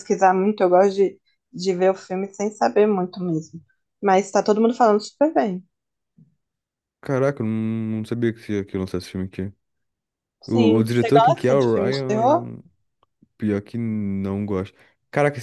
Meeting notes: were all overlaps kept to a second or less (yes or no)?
no